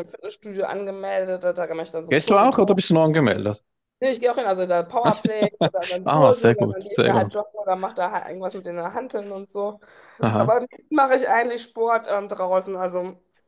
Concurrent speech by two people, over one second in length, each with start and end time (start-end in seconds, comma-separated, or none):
6.0-7.3